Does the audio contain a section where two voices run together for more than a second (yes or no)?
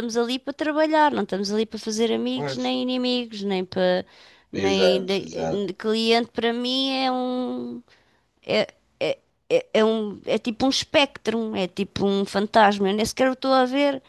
yes